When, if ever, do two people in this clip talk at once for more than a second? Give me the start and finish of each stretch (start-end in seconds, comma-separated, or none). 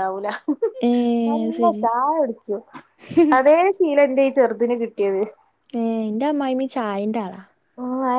none